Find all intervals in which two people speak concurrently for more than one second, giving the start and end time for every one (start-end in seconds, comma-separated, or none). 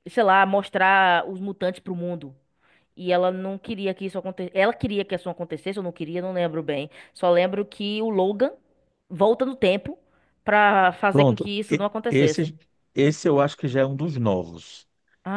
11.1-12.5